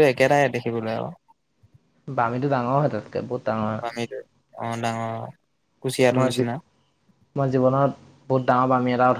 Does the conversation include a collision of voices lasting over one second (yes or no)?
no